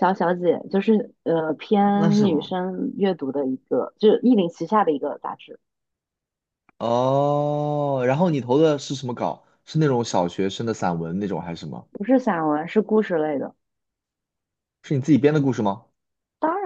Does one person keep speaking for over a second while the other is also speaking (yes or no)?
no